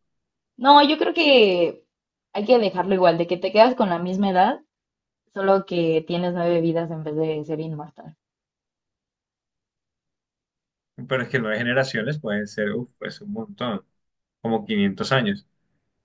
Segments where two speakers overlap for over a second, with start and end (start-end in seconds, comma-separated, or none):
none